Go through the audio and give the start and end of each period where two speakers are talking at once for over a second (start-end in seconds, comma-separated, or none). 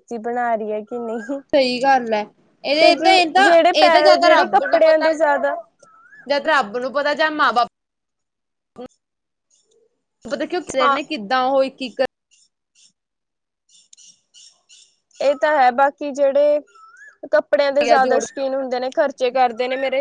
2.8-5.1